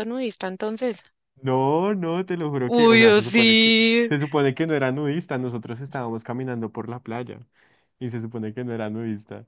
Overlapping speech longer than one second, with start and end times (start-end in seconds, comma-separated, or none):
2.6-4.1